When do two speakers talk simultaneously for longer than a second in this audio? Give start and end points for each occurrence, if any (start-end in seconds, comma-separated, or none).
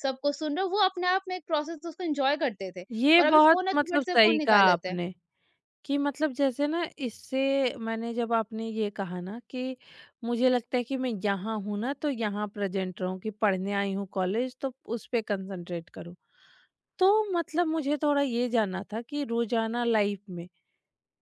2.9-5.0